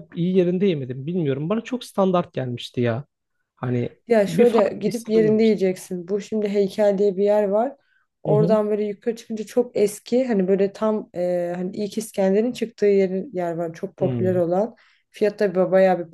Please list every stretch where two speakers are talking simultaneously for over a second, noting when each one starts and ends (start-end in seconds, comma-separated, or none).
4.1-5.6